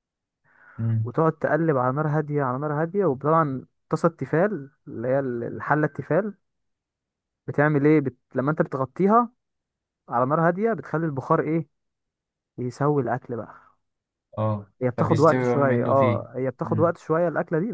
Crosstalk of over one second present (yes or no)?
yes